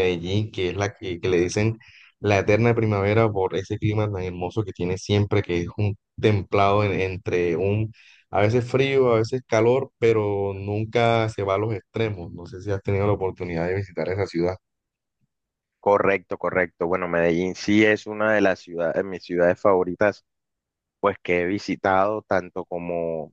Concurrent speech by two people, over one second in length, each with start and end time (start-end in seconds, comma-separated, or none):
none